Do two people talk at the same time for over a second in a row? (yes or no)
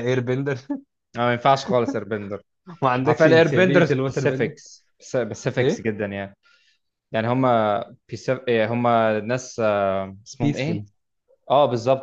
yes